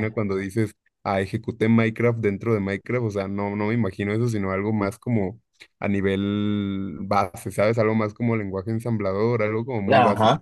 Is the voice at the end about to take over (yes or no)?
yes